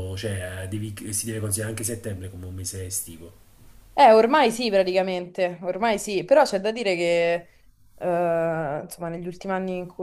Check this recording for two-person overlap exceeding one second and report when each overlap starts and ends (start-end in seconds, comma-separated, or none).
none